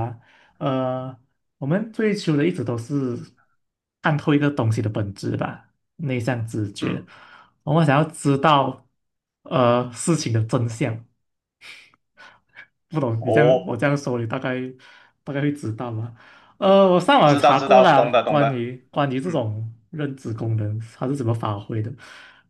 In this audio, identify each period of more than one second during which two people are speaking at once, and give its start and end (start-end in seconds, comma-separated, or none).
17.2-18.6